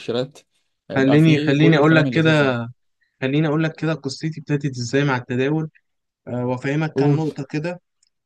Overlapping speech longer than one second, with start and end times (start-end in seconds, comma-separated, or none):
0.9-2.5